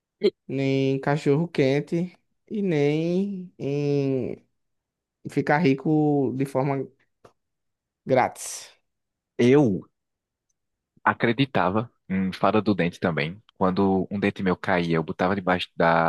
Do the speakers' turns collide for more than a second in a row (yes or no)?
no